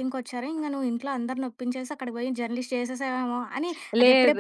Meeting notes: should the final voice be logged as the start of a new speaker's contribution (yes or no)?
no